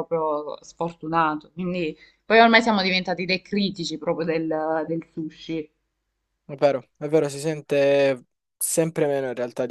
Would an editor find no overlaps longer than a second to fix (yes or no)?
yes